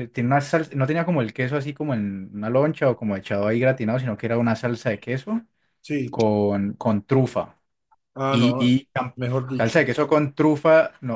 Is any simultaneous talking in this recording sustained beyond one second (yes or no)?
no